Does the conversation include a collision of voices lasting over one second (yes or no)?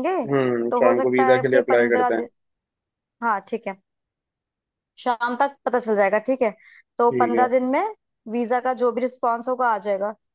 yes